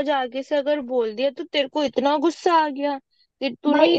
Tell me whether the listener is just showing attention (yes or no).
no